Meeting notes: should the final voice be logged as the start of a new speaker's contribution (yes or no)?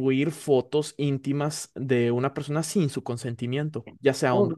yes